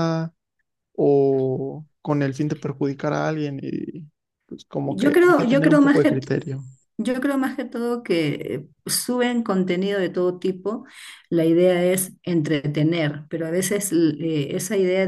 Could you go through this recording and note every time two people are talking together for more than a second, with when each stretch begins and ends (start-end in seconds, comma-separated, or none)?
4.8-6.2